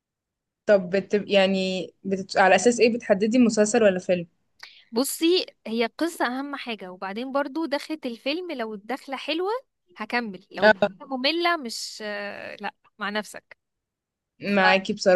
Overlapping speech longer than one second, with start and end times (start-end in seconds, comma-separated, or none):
none